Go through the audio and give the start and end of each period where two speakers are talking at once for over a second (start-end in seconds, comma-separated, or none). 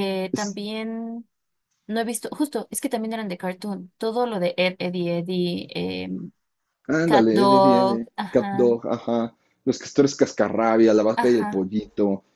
7.0-8.7